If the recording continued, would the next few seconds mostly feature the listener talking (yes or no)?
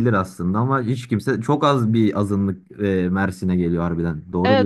yes